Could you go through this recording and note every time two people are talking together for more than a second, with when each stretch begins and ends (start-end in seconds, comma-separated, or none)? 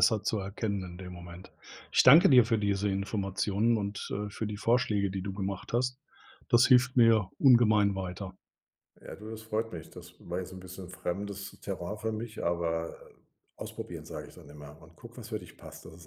none